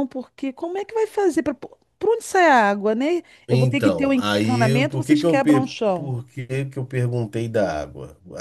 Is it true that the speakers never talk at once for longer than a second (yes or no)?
no